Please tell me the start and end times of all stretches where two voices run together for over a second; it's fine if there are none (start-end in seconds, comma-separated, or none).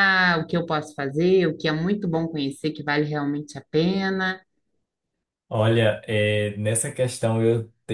none